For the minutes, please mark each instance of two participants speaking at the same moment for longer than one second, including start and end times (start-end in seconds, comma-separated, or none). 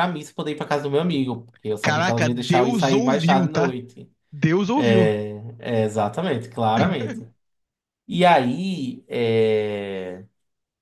1.8-3.8